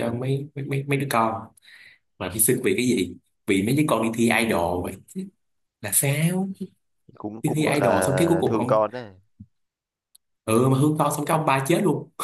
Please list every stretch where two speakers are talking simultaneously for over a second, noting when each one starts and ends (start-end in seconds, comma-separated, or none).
7.4-8.8